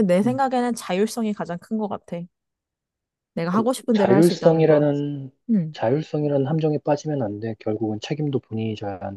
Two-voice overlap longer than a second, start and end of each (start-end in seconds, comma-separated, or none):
3.5-4.9